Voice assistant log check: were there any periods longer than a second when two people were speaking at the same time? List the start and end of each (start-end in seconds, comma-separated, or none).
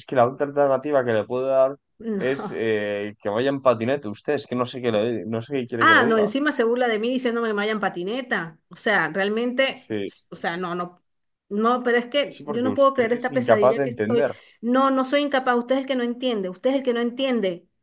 12.3-14.2